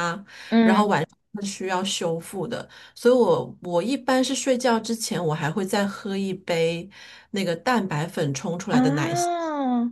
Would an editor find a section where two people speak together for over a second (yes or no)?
no